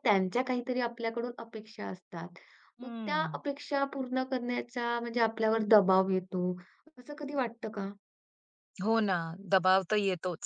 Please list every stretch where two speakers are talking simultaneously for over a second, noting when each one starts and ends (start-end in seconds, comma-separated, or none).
none